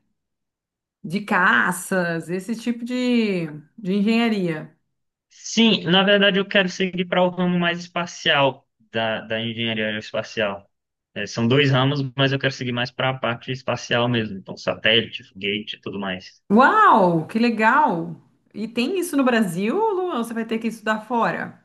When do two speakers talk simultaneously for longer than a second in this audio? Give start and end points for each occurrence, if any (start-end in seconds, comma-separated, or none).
none